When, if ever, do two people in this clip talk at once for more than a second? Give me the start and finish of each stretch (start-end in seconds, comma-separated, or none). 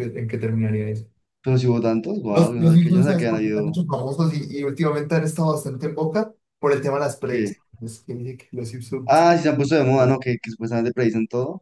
2.3-3.8